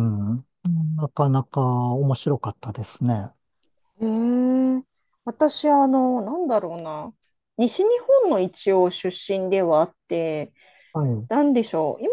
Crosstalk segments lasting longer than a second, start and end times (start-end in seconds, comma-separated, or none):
none